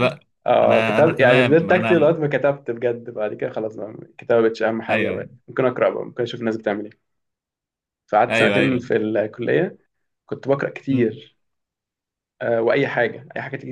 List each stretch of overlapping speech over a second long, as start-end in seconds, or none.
0.6-2.2